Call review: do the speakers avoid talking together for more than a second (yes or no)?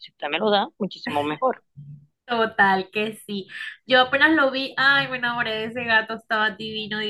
yes